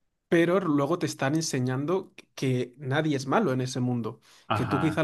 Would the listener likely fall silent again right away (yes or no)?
yes